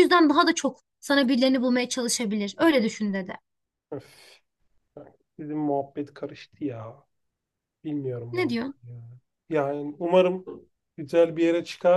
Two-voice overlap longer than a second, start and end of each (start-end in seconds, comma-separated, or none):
none